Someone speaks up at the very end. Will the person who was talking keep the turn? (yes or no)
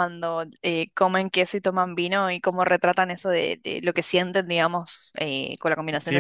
no